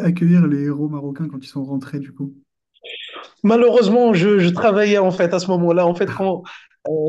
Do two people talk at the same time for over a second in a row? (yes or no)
no